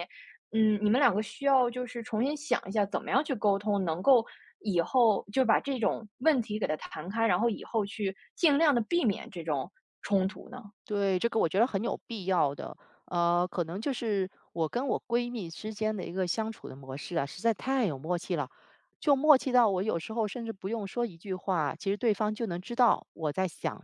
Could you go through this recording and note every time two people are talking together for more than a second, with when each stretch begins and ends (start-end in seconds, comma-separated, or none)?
none